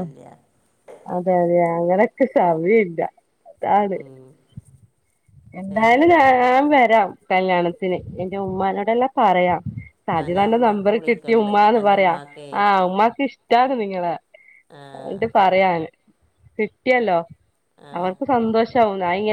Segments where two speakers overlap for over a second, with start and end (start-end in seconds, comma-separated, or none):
10.2-12.2